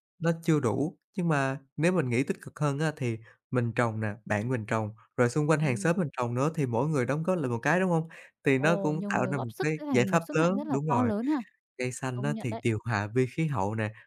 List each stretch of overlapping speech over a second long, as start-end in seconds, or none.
8.6-11.1